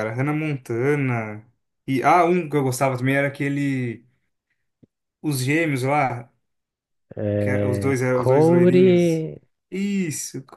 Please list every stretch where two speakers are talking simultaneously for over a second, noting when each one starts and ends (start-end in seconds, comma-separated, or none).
7.4-9.2